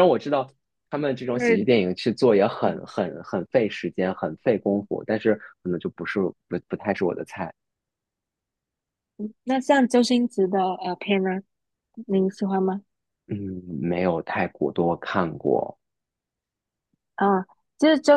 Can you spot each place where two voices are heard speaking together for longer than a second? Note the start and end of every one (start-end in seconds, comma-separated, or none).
none